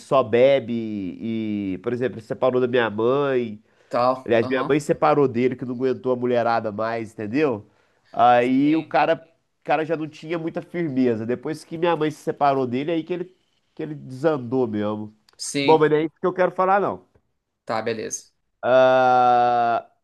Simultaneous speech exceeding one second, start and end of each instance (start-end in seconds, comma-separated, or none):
none